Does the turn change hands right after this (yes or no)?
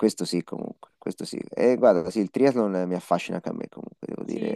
yes